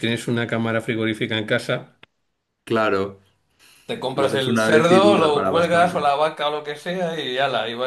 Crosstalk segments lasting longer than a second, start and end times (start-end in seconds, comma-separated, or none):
4.1-6.0